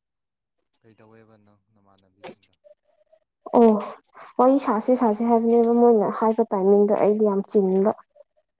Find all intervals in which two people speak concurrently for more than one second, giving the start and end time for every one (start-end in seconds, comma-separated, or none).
none